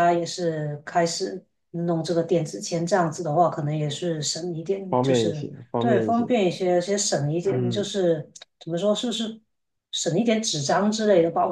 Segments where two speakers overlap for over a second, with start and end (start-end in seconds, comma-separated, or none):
4.9-6.3